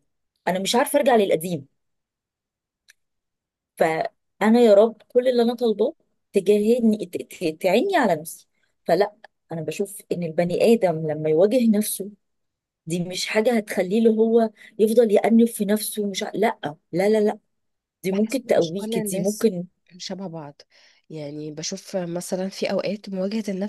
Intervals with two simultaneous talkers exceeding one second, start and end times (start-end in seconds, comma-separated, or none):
18.1-19.5